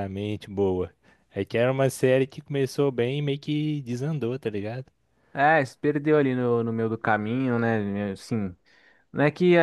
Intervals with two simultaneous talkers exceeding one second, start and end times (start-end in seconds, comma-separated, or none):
none